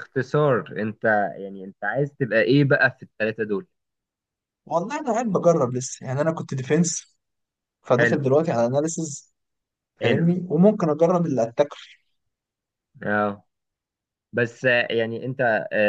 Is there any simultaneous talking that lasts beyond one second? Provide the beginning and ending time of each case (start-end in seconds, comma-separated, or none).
none